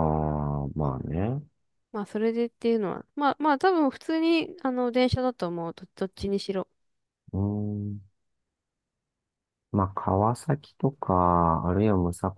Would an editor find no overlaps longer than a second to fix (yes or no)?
yes